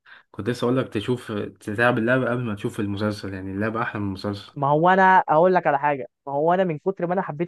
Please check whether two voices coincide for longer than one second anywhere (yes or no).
no